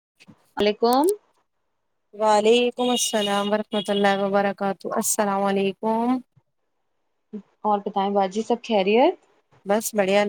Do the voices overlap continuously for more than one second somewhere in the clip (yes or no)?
no